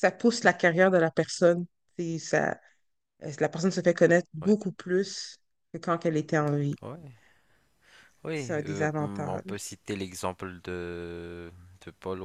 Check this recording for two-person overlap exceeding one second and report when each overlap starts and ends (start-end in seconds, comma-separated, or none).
8.3-9.7